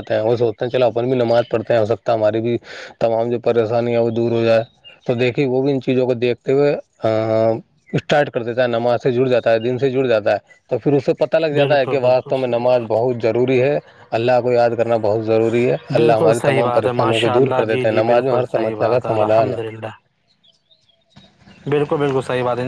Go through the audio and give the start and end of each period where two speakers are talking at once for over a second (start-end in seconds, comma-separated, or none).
11.6-12.9, 16.0-19.6